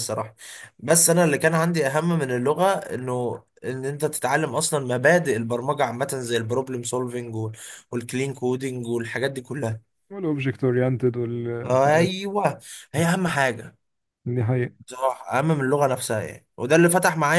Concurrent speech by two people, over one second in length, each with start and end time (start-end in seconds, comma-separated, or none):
none